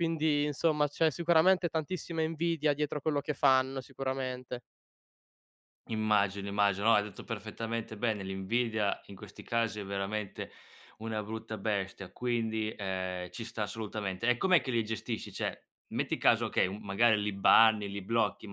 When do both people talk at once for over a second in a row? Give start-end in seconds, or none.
none